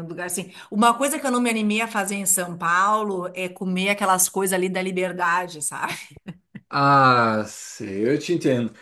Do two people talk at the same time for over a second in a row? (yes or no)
no